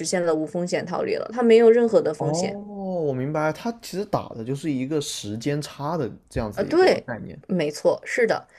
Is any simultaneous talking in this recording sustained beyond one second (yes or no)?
no